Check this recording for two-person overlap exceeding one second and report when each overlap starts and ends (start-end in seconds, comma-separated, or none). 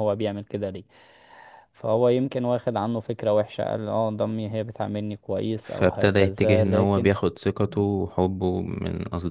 5.6-7.1